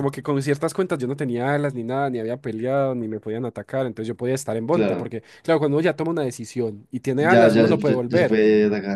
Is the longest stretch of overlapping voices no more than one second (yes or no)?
no